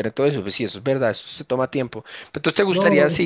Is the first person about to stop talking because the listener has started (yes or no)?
no